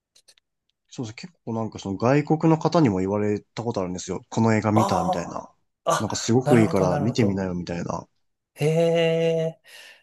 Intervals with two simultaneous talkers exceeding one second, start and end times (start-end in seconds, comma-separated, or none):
6.0-7.5